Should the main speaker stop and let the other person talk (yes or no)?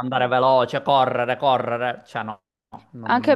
yes